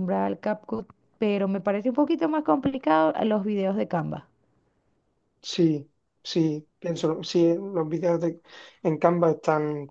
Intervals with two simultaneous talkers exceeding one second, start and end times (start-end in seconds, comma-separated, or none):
none